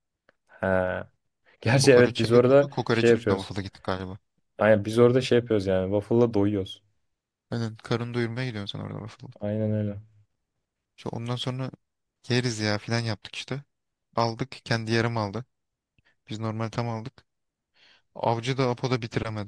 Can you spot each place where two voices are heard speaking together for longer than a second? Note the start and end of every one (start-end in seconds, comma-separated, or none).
1.8-3.5